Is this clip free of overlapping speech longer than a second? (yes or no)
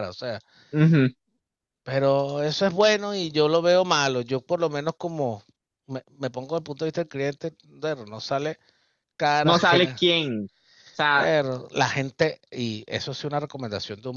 yes